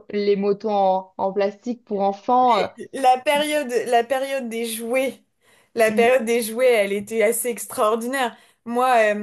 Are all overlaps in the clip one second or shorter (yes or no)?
yes